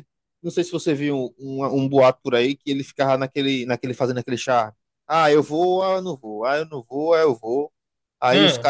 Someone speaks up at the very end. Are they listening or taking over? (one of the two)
listening